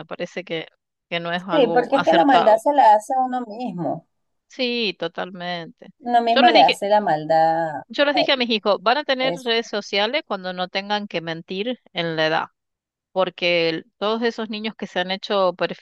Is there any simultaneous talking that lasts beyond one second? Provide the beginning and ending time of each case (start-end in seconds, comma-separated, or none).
1.4-2.6